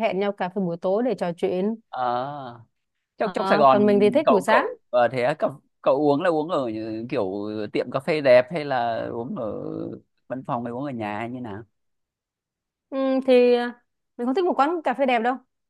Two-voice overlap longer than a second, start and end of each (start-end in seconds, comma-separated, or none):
3.2-4.7